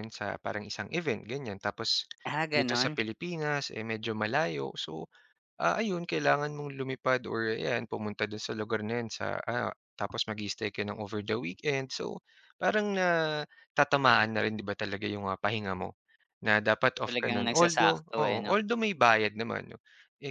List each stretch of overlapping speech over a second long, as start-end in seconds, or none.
17.1-18.5